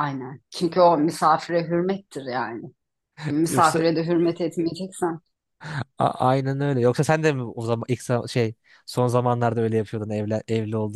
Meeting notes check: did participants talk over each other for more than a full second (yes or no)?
no